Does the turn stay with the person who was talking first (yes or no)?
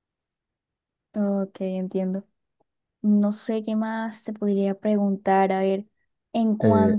yes